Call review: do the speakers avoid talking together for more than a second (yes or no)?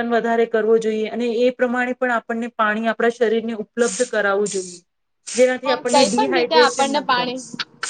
no